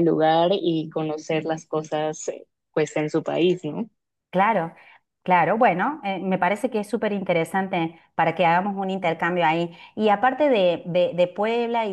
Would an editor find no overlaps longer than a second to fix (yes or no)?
yes